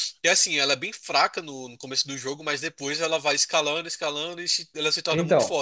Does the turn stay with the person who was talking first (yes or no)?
no